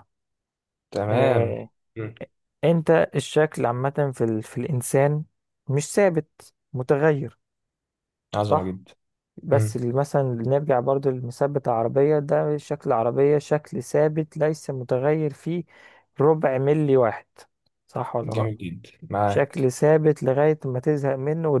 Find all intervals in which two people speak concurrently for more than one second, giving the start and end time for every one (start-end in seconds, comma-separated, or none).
none